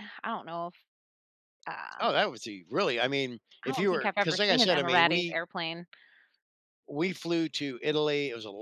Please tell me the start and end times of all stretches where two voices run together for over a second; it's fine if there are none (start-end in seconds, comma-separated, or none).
3.7-5.4